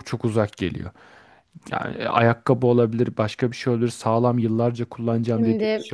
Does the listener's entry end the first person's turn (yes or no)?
no